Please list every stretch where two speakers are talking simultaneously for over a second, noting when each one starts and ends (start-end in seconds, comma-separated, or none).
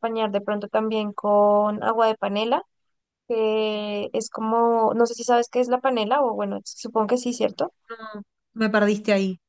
none